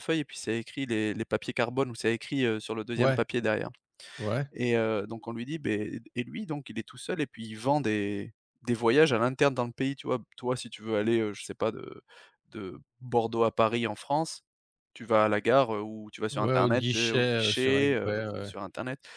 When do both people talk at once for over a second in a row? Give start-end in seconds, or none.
16.3-18.5